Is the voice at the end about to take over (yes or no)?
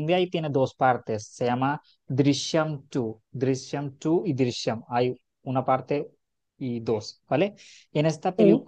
no